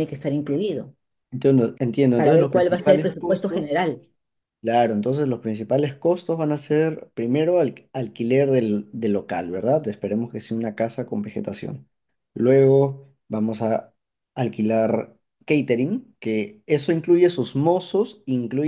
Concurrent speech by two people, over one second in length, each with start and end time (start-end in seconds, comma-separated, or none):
2.1-3.8